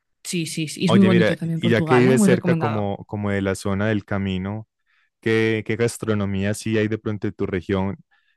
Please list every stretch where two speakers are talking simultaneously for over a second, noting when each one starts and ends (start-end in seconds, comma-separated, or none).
0.9-2.9